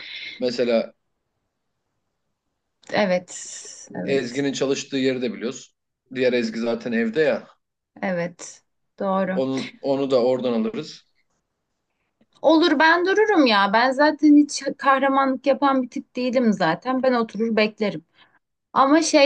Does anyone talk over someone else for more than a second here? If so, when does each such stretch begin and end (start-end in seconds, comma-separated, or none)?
none